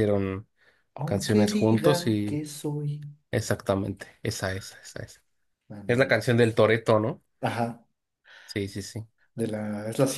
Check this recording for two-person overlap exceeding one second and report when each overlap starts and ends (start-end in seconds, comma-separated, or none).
1.0-2.4